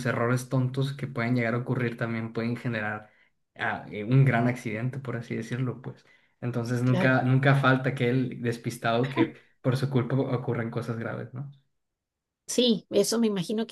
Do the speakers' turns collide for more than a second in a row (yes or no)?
no